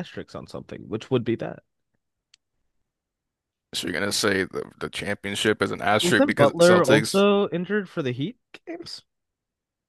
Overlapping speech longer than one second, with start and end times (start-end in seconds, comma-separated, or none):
6.0-7.2